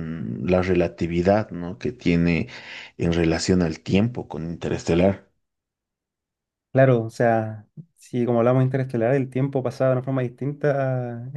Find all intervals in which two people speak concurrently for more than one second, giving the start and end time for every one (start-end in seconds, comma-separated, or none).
none